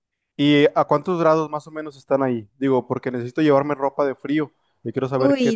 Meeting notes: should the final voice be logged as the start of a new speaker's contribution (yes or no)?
yes